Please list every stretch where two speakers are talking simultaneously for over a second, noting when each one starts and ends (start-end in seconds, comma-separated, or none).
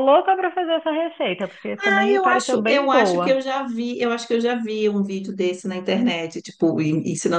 1.8-3.4